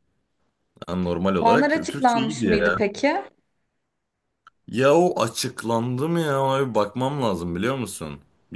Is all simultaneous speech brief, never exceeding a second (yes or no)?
no